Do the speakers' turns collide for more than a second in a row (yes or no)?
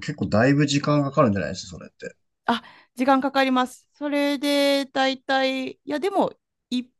no